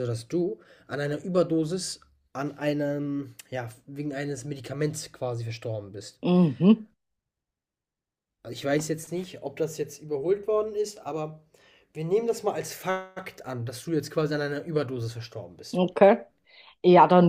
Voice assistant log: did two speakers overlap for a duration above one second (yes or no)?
no